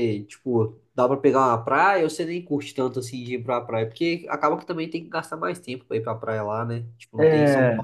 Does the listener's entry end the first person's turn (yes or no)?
yes